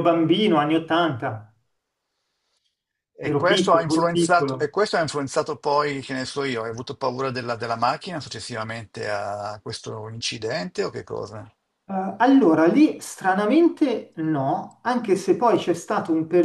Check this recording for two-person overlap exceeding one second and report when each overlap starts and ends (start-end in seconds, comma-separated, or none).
3.2-4.7